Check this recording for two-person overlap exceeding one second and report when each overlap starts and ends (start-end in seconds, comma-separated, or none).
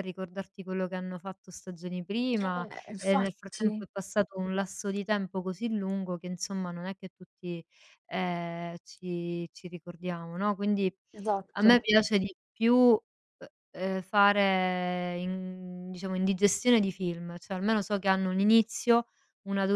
2.4-3.9